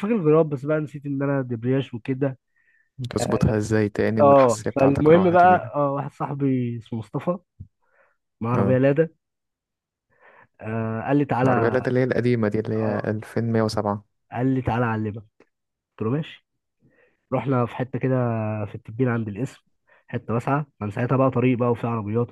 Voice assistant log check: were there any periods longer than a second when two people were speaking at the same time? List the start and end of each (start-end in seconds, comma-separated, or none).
4.2-5.7